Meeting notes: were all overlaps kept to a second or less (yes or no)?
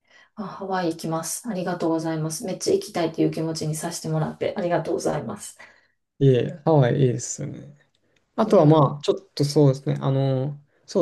yes